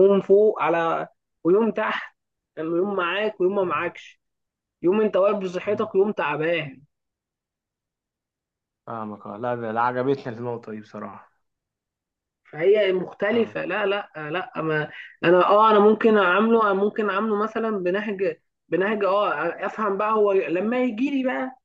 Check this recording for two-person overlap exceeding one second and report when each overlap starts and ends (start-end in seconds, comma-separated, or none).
none